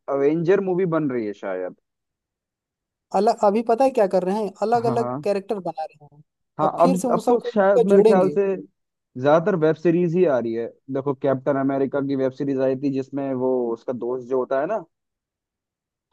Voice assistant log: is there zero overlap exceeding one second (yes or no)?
no